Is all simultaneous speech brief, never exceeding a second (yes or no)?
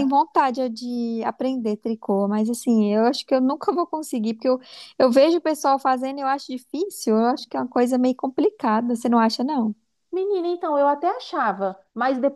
yes